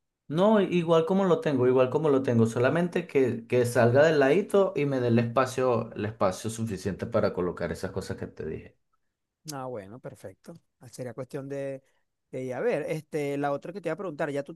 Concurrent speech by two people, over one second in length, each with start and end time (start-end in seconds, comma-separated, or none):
none